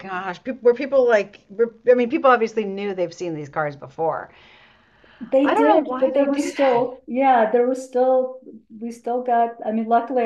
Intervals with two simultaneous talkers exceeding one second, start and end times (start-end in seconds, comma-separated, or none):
5.4-6.8